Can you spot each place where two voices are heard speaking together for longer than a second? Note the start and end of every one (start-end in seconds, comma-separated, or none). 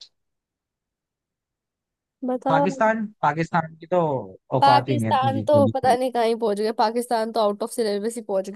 4.6-6.0